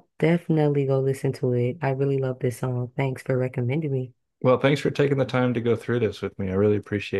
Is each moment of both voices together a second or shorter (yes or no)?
yes